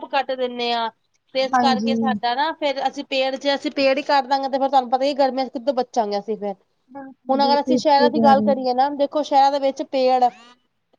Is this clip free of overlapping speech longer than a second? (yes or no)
no